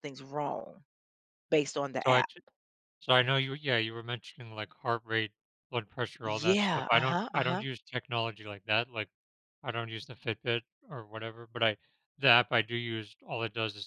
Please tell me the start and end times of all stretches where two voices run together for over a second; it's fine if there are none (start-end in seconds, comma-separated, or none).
6.2-7.6